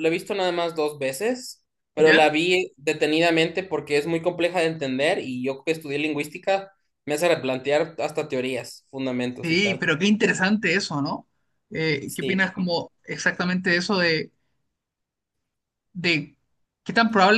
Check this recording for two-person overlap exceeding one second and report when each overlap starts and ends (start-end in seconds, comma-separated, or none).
none